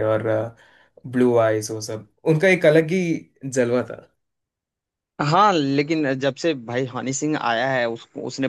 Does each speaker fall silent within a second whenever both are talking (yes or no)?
yes